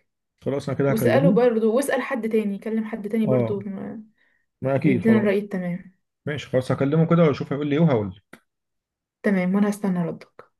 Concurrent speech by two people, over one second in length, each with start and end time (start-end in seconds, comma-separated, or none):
none